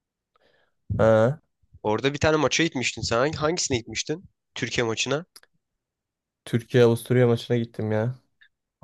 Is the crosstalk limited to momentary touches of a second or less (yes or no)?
yes